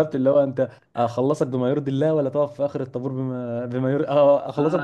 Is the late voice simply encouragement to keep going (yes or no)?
yes